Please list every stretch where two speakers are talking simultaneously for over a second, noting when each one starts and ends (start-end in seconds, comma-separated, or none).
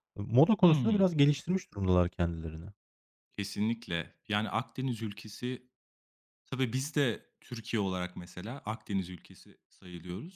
none